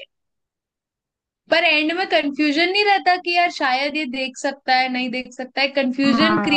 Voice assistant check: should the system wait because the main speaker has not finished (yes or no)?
no